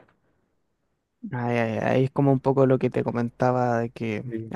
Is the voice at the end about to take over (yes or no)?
no